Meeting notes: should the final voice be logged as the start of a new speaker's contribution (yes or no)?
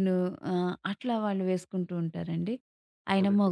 no